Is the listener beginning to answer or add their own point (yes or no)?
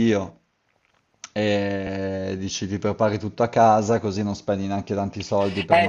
yes